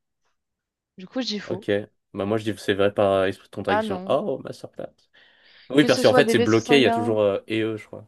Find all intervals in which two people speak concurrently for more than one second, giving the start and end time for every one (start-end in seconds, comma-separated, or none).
5.8-7.2